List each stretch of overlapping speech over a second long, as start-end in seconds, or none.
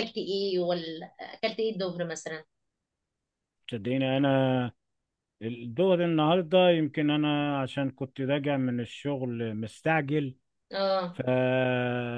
none